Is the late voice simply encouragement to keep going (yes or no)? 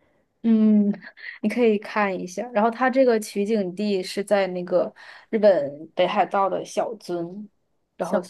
yes